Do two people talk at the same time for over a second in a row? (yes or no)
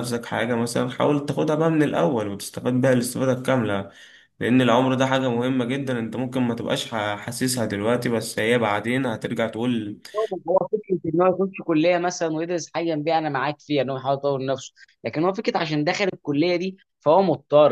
no